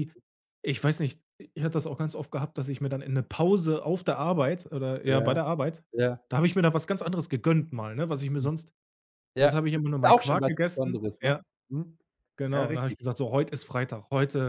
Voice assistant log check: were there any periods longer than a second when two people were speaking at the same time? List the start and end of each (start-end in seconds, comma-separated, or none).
9.4-11.4